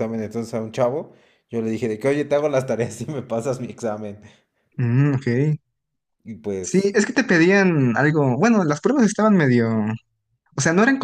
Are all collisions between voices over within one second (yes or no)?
yes